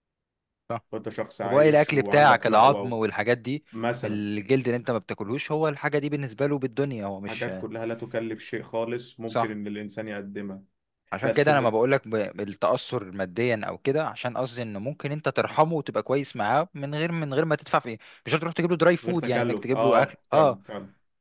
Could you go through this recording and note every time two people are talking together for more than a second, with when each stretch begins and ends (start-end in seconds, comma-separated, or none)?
1.4-2.9, 19.0-20.6